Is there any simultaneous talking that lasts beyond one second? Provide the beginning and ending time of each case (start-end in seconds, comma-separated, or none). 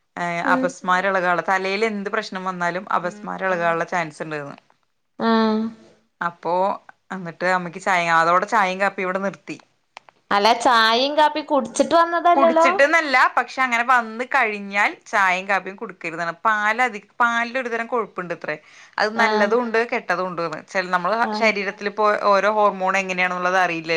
none